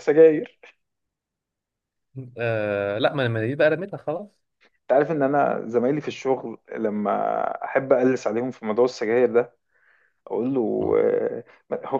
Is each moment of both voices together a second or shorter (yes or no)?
yes